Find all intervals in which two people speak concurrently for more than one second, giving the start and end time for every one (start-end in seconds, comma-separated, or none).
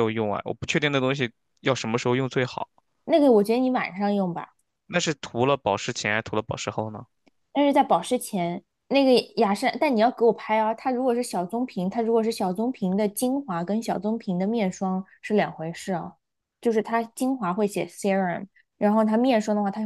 none